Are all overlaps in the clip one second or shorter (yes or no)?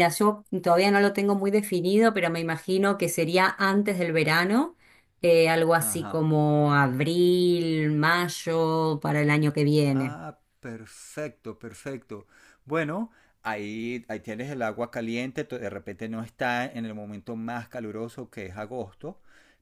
yes